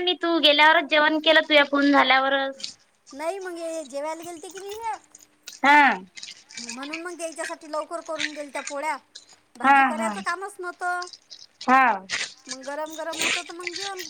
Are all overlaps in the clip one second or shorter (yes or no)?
yes